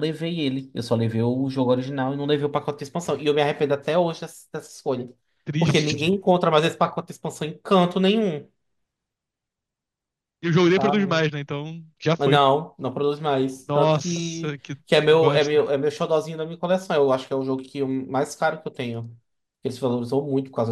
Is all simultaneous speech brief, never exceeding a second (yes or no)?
no